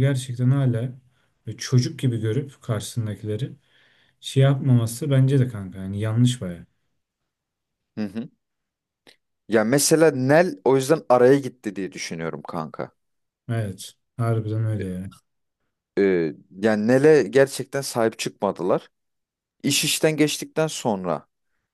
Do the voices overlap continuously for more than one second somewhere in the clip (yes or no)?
no